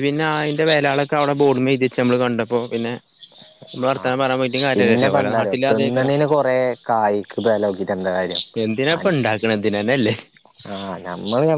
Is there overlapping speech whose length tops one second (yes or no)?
yes